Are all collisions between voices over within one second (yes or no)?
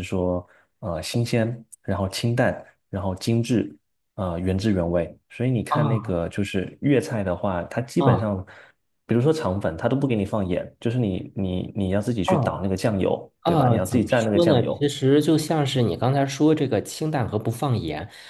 no